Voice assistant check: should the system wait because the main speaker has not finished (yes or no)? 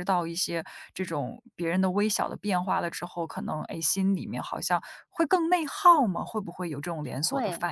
no